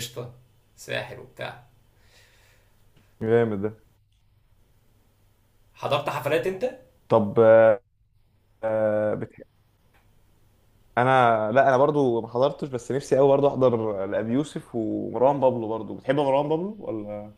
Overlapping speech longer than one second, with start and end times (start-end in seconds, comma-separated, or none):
none